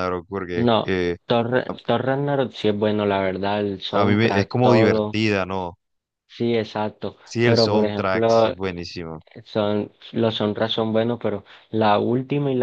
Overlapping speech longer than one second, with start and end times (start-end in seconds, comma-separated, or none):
3.9-5.2, 7.2-8.5